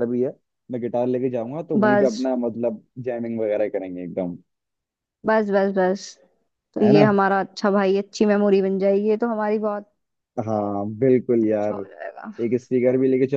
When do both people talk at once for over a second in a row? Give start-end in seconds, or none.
none